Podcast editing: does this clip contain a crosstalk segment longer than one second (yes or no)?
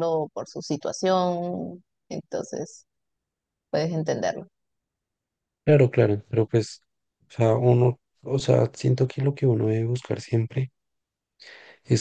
no